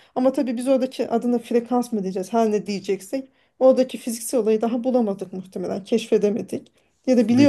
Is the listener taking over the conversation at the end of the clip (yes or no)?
no